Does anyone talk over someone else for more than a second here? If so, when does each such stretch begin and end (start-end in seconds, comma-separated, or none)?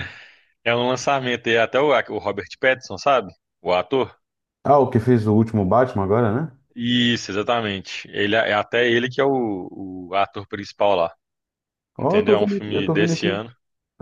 12.0-13.5